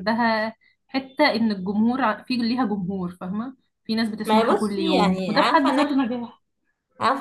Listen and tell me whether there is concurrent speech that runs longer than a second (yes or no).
yes